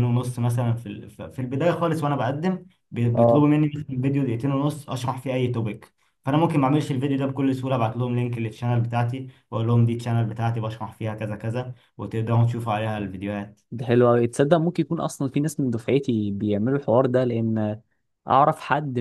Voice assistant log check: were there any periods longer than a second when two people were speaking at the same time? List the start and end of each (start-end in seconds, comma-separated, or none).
none